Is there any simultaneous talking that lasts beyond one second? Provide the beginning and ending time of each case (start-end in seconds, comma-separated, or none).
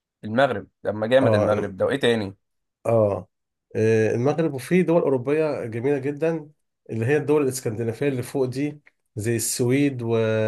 none